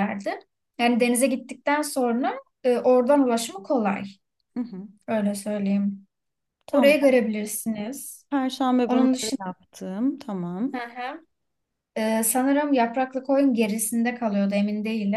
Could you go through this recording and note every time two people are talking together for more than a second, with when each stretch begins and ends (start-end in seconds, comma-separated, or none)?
none